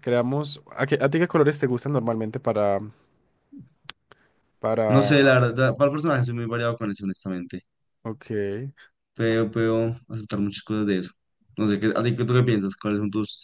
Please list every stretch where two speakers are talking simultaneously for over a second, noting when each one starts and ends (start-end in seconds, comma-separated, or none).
none